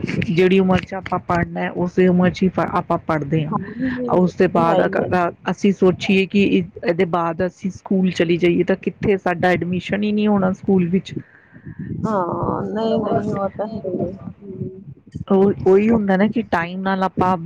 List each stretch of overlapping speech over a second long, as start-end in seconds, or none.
3.5-5.1